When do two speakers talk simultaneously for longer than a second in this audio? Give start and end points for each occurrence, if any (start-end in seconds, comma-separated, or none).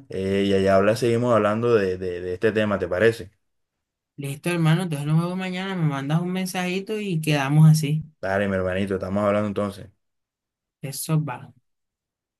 none